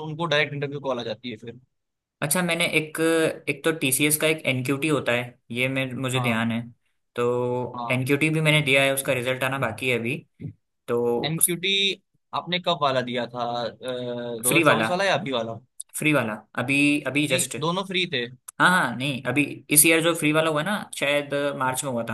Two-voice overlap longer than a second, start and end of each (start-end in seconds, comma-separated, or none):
none